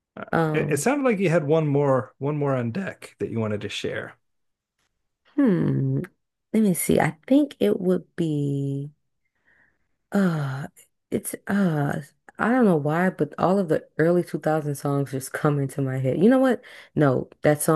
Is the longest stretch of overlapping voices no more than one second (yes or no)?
yes